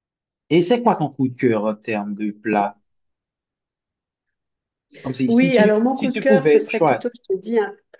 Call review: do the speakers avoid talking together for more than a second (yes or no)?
no